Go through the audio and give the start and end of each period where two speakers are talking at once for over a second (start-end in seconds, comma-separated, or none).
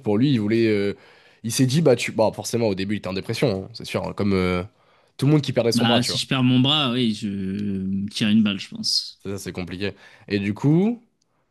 none